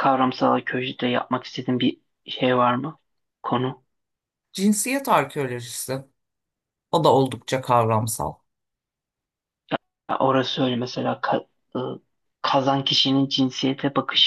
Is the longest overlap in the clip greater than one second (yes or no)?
no